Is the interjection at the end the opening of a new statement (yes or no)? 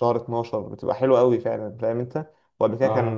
no